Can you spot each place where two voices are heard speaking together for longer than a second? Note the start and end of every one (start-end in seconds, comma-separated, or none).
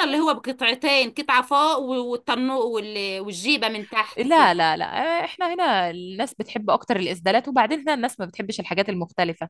none